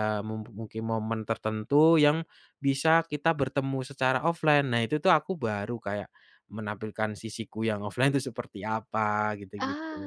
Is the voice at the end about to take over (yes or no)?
yes